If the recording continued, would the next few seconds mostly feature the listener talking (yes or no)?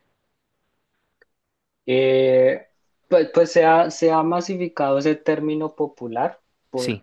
no